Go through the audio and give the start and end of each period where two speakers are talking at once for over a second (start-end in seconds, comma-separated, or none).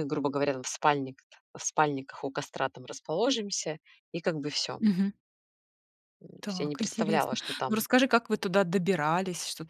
6.4-7.8